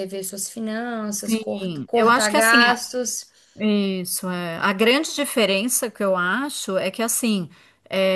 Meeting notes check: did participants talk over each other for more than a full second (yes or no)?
yes